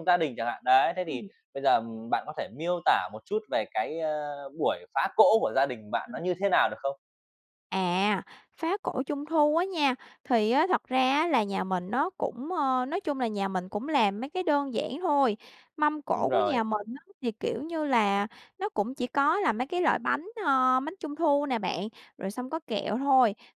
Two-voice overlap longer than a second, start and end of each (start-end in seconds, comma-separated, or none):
none